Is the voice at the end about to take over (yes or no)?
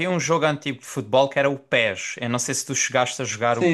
yes